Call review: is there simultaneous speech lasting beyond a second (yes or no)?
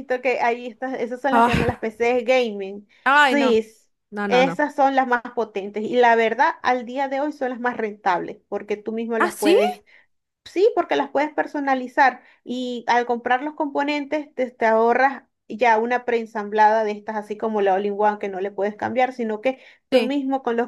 no